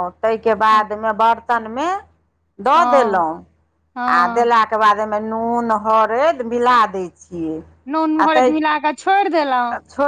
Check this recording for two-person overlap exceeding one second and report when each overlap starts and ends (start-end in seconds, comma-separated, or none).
none